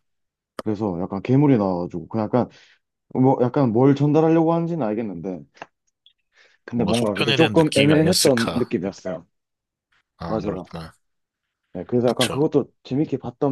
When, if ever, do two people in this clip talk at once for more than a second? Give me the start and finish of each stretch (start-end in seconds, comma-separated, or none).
6.7-8.7